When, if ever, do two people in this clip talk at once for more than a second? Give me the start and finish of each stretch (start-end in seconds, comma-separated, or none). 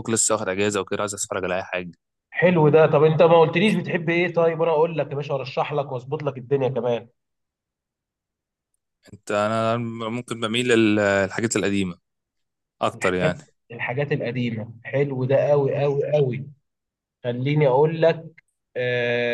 none